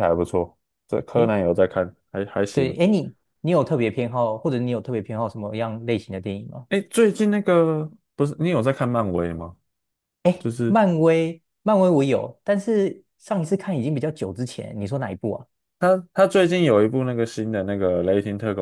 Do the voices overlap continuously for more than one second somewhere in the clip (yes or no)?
no